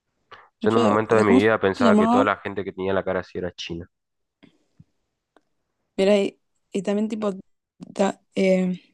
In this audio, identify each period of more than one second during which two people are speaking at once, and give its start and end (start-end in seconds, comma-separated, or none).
0.6-2.3